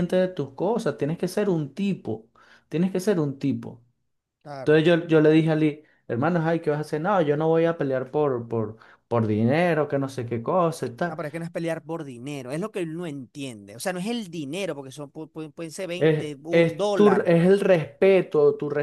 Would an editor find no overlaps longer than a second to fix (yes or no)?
no